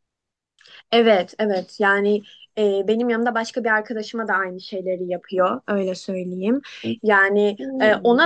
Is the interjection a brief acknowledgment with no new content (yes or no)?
yes